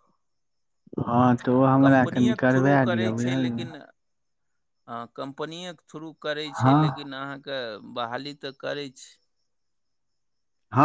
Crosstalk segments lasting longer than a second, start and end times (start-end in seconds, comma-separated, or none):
1.8-3.7